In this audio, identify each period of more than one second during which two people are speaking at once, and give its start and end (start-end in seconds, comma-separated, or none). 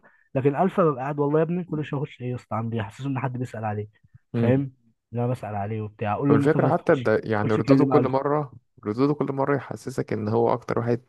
6.3-8.2